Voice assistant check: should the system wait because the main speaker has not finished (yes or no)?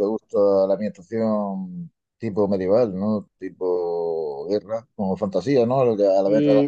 no